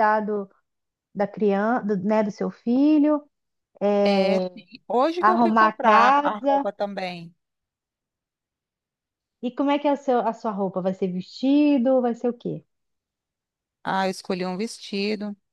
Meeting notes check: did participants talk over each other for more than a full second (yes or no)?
yes